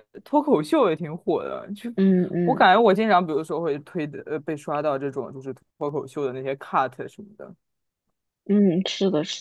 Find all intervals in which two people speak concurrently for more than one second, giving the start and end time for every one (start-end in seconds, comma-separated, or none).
none